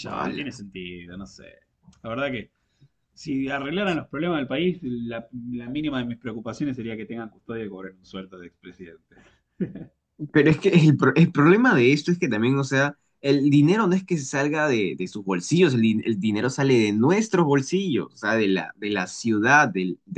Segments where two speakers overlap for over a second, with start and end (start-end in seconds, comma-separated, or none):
none